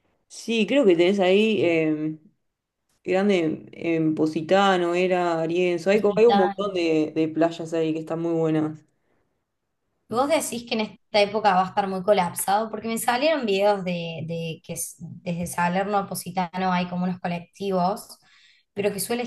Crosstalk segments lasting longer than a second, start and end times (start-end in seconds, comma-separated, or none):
none